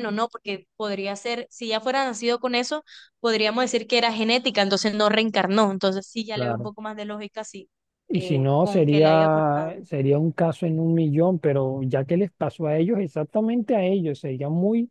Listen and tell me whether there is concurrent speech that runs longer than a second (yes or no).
yes